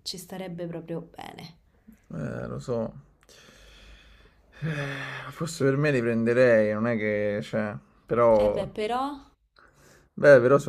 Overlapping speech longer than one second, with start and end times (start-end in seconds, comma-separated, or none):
none